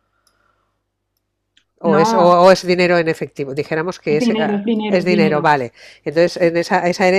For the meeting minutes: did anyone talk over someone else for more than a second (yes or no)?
yes